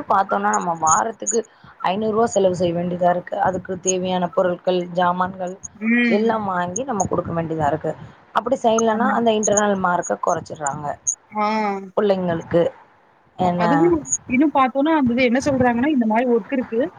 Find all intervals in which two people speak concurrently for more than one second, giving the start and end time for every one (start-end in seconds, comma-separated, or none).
none